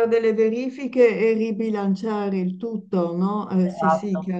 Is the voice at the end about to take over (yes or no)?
yes